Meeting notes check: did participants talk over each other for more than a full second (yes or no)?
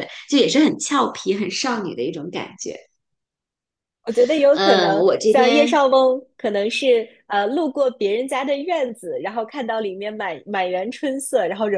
yes